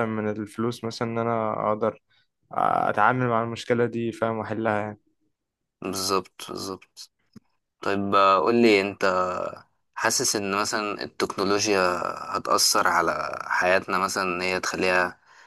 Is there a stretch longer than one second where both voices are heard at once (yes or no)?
no